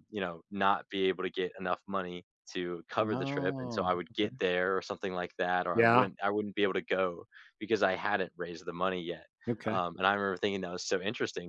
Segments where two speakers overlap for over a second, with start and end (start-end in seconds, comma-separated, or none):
3.0-4.3